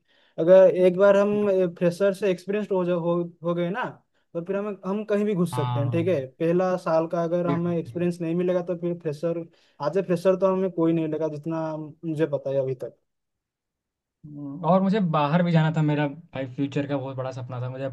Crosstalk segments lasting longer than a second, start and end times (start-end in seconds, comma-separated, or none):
none